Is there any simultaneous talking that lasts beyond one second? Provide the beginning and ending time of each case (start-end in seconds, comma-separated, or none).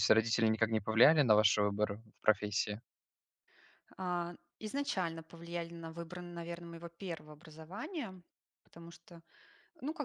none